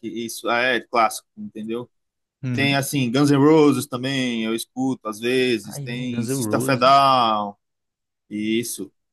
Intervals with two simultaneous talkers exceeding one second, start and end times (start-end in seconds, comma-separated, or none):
5.7-6.9